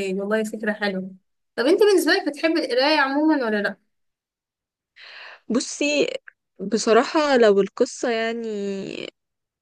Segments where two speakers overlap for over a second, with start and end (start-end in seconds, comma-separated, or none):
none